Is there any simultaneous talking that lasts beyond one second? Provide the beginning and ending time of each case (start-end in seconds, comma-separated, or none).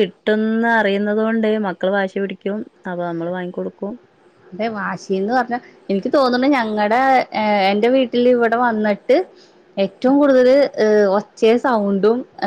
none